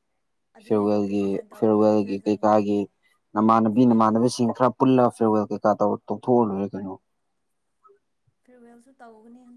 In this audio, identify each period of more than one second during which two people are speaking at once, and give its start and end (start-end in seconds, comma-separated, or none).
0.6-2.8